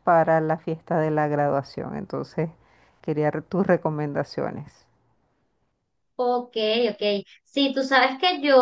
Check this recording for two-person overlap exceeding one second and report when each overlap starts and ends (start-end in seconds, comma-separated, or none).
none